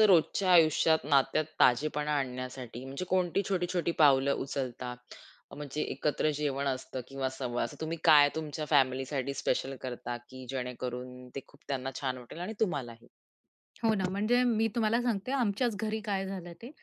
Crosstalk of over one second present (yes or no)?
no